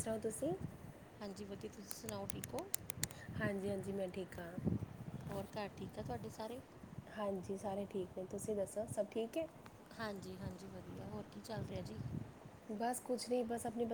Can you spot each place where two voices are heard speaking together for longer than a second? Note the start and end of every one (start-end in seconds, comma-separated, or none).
none